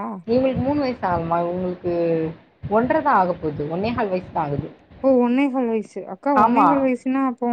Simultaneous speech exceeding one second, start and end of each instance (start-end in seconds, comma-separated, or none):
none